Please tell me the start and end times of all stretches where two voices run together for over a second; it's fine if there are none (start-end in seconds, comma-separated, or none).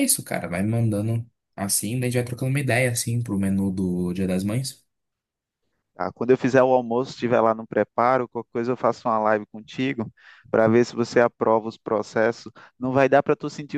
none